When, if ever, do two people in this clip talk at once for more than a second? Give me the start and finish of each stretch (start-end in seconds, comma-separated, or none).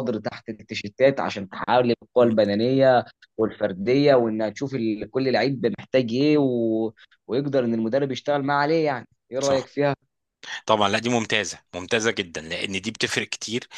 none